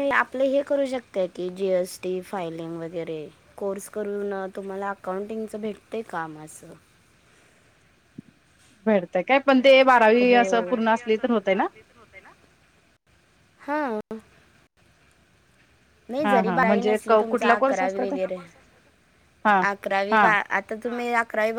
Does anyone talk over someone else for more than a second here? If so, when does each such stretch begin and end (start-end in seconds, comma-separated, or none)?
16.2-18.1